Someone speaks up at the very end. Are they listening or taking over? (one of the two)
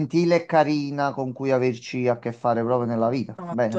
taking over